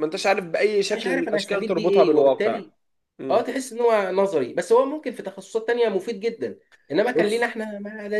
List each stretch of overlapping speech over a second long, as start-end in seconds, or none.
0.9-2.6